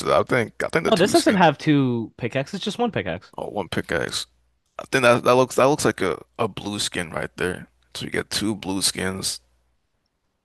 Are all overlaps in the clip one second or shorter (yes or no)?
yes